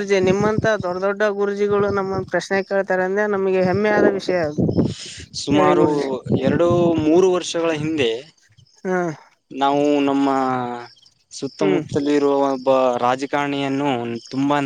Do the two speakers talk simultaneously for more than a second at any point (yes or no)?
no